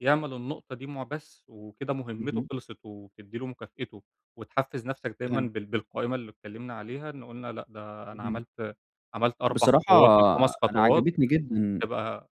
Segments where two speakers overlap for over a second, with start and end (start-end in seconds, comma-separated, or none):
none